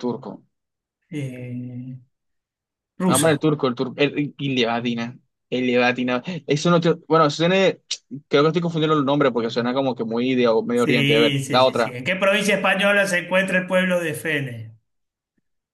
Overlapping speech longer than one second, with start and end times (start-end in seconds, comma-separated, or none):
10.7-12.0